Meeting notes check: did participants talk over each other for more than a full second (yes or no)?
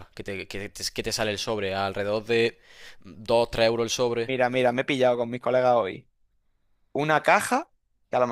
no